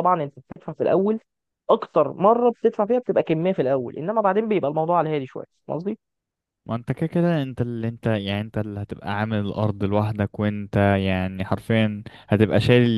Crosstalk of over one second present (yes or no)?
no